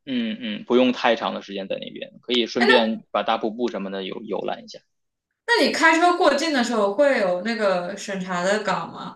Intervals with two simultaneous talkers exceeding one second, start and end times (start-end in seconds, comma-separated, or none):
none